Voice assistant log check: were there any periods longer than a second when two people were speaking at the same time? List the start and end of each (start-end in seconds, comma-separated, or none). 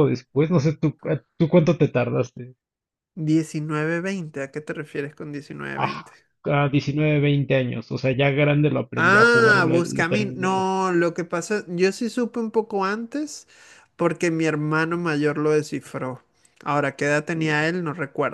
8.9-10.7